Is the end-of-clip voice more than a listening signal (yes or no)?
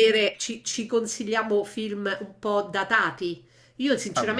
no